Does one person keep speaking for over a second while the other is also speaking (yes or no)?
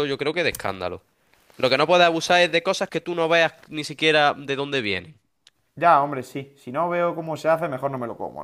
no